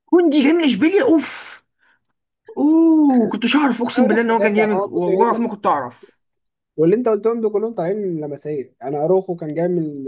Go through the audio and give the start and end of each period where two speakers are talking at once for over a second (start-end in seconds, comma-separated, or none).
4.0-5.5